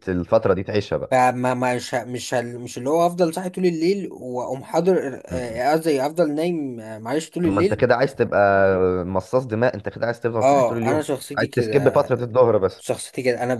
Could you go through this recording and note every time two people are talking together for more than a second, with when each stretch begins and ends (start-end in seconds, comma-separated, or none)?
10.4-12.1